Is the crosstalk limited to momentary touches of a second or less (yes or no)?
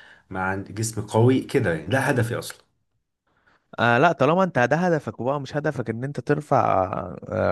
yes